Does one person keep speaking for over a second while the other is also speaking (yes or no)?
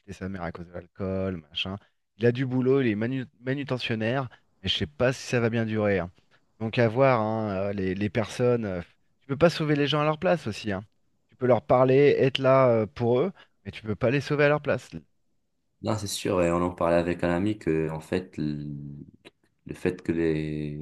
no